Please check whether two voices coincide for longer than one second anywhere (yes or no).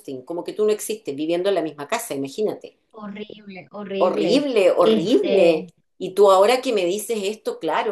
yes